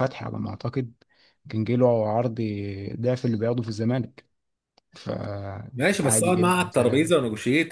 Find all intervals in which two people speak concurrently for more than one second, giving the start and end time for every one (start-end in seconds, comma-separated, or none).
5.8-7.1